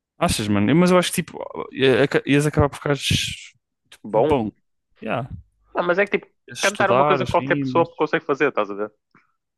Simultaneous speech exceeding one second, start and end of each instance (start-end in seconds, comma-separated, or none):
6.5-7.9